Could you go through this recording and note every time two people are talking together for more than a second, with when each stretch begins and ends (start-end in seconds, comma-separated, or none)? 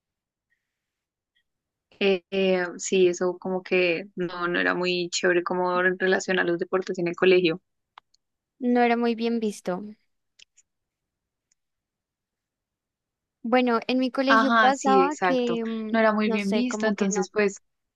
14.3-17.3